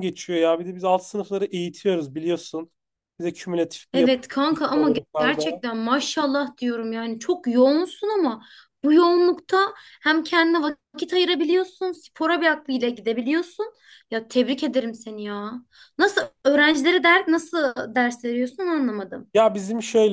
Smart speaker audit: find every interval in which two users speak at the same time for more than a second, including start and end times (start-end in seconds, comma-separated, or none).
3.9-5.6